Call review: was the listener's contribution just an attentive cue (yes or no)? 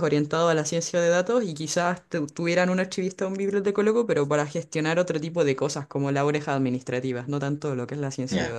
no